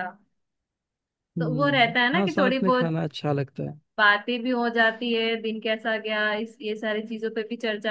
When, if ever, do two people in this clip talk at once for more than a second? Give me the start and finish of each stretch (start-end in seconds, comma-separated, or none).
1.4-3.0